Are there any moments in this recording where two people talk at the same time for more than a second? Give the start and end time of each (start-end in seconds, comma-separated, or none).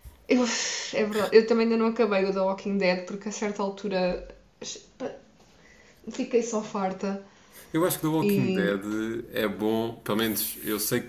none